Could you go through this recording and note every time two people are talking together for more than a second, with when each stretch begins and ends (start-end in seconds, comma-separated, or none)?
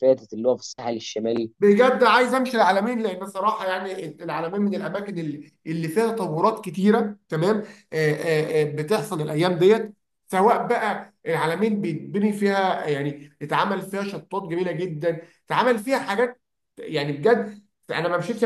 none